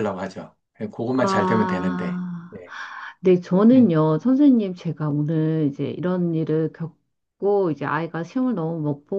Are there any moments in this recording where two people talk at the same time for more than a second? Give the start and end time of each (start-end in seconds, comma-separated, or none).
1.1-2.5